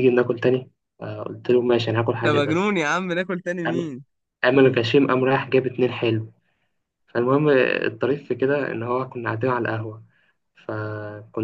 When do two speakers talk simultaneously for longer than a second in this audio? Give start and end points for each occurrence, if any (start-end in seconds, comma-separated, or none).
none